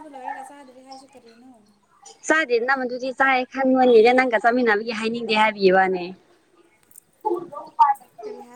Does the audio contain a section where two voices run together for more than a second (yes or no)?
no